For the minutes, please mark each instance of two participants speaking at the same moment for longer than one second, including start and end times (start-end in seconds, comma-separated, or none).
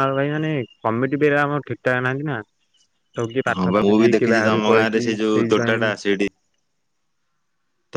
3.6-5.9